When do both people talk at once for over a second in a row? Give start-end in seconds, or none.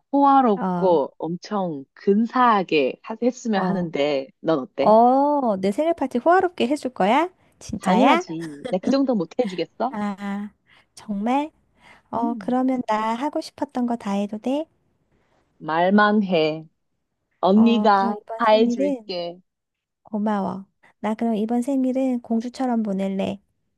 17.5-19.1